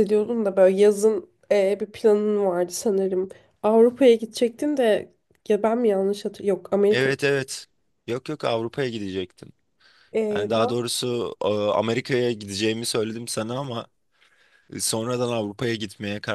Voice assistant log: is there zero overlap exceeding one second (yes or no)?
yes